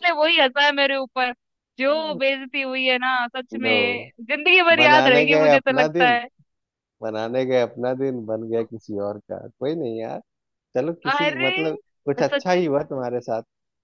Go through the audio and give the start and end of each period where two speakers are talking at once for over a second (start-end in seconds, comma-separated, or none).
4.8-6.2